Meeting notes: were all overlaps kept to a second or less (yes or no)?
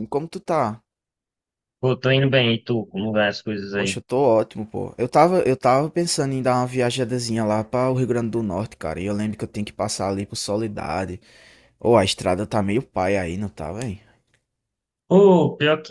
yes